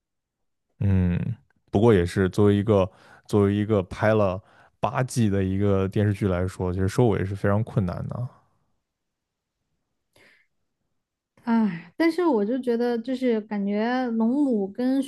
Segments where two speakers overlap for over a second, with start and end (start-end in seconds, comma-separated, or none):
none